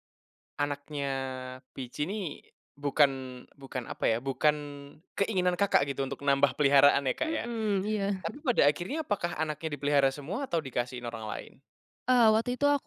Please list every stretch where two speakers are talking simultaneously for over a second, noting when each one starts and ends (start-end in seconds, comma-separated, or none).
none